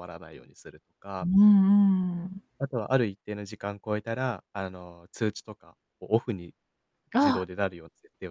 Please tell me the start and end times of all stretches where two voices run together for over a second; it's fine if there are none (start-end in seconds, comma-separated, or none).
none